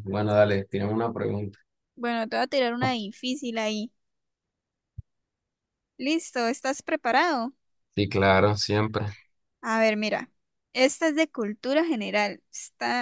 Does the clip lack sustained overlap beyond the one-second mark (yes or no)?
yes